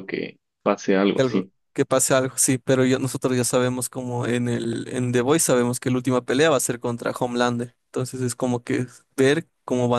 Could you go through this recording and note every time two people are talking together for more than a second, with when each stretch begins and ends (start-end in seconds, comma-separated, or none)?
none